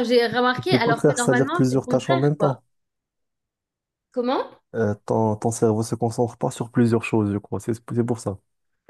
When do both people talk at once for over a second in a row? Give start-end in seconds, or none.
0.5-2.6